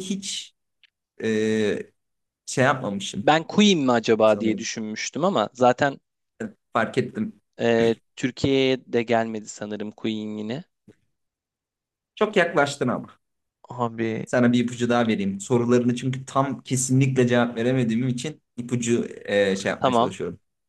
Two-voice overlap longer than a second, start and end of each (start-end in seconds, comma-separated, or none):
none